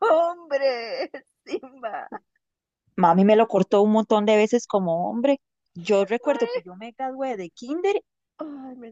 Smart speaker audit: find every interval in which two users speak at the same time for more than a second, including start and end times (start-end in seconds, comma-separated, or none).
none